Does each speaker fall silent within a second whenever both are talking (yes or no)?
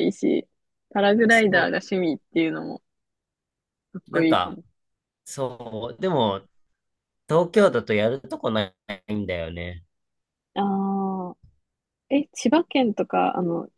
yes